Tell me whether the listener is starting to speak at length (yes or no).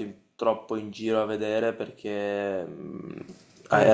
no